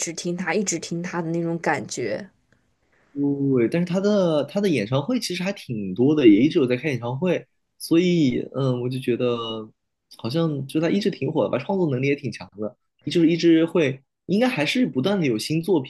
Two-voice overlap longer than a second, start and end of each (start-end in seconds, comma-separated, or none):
none